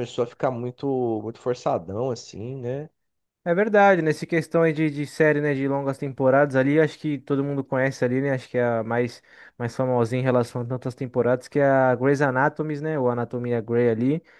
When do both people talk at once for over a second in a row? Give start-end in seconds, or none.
none